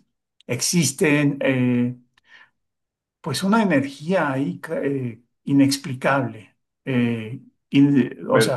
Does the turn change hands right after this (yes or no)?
no